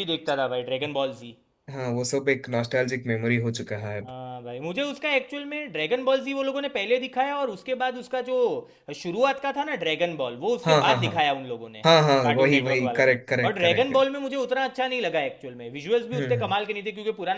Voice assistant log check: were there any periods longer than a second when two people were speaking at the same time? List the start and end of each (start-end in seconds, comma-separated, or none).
12.2-14.0